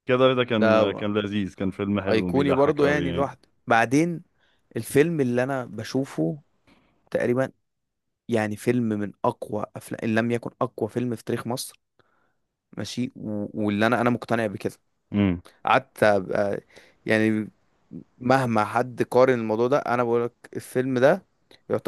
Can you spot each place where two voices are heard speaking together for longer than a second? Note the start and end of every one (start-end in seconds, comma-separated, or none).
2.1-3.3